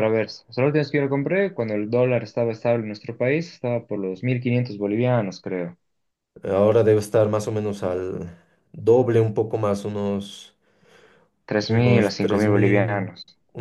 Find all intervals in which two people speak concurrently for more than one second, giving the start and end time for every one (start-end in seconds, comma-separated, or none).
11.7-13.1